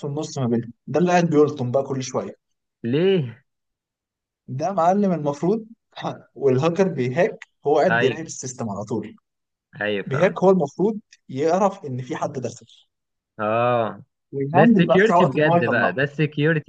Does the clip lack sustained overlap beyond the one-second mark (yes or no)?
no